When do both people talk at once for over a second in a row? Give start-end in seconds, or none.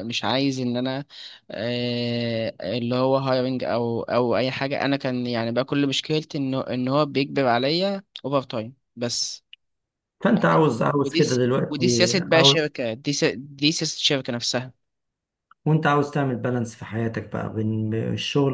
10.4-12.6